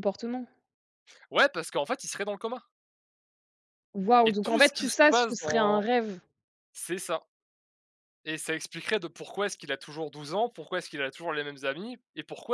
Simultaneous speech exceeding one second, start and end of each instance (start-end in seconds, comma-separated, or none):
4.2-5.9